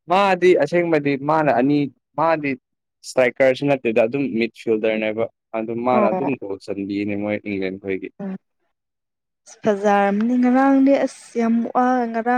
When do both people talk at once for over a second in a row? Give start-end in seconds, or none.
none